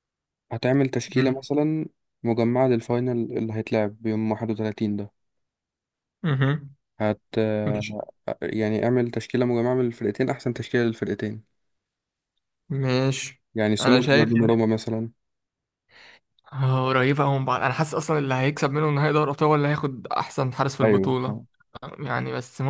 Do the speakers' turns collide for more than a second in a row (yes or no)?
no